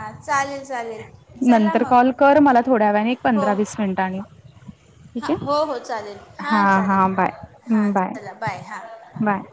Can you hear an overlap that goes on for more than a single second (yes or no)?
no